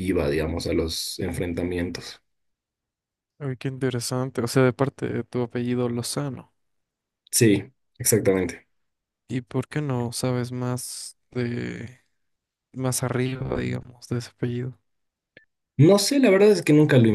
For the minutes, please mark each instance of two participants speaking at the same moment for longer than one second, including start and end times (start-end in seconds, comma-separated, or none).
none